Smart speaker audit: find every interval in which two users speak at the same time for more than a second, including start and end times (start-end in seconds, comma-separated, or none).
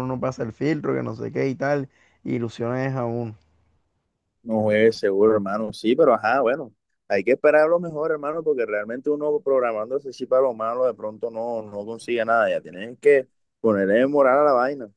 none